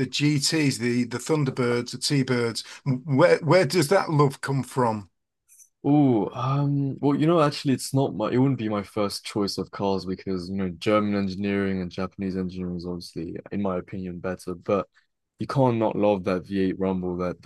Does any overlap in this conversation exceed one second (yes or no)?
no